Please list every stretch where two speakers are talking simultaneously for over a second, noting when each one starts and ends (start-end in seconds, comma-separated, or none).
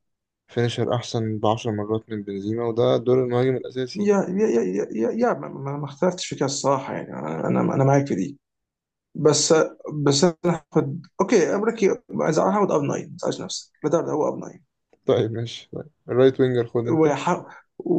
none